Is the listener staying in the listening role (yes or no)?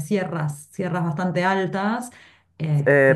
no